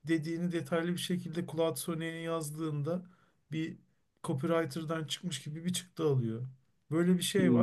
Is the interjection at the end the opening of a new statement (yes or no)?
no